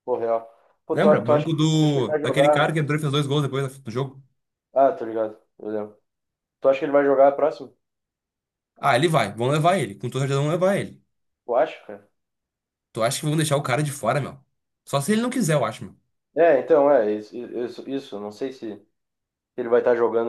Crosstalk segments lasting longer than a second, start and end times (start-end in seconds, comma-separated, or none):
0.9-2.7